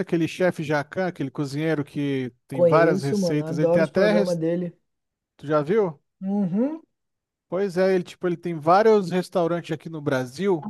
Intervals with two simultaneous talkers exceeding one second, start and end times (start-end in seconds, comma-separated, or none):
2.5-4.4